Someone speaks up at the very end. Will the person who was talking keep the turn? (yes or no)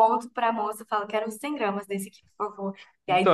no